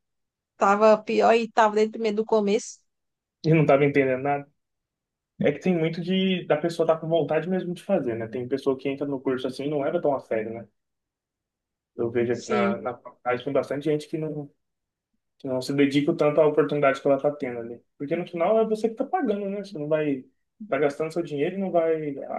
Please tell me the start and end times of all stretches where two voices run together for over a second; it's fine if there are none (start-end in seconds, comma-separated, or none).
none